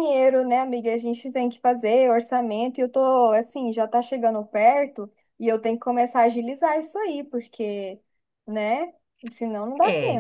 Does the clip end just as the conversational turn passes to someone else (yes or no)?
yes